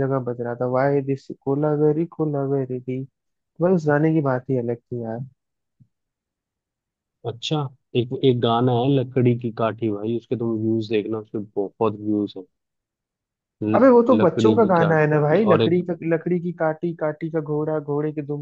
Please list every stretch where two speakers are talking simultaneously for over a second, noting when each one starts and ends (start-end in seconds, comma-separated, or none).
13.8-15.8